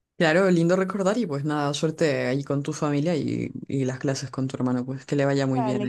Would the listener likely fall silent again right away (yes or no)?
no